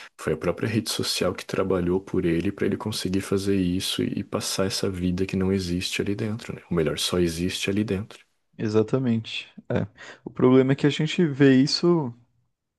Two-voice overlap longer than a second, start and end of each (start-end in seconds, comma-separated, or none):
none